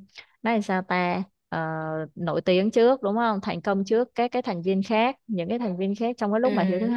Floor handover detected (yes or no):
no